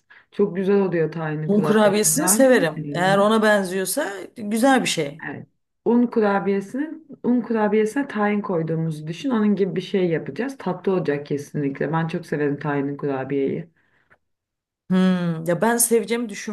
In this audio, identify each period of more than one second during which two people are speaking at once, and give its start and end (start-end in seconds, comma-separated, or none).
1.5-3.3